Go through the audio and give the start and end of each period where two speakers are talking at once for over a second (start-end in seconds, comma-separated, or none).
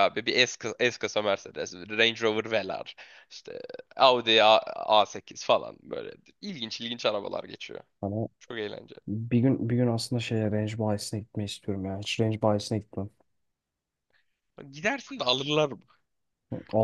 none